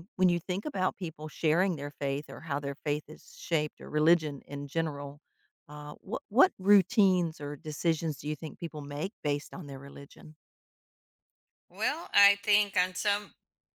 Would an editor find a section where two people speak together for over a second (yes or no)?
no